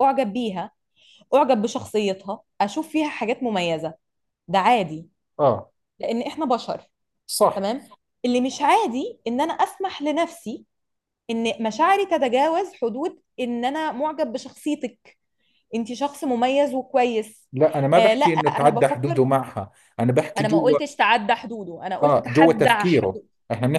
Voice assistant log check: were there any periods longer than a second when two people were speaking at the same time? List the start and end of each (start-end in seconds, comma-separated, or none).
18.0-19.2, 22.0-23.3